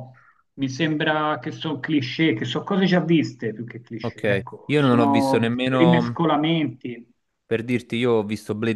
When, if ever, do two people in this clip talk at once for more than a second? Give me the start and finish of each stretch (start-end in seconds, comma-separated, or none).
4.0-6.1